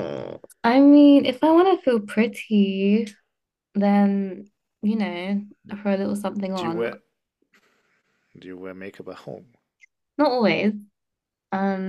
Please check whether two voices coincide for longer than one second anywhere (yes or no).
no